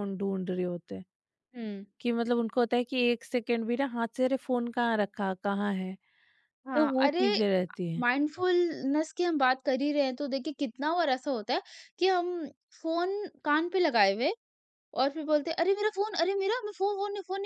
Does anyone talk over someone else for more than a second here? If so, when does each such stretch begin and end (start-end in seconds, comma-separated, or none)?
none